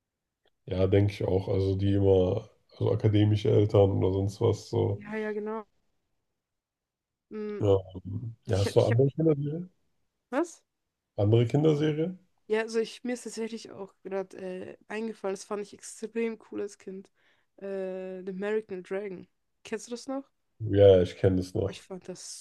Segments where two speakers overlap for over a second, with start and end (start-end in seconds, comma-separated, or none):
none